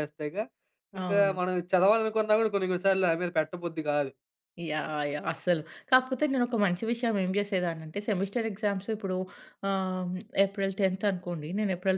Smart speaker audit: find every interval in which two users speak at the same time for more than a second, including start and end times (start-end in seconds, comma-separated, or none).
none